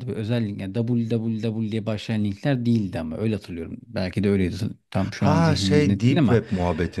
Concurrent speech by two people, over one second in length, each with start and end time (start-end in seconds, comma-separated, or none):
5.2-6.4